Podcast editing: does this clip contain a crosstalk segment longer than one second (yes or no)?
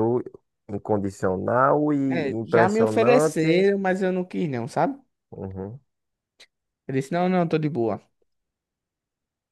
yes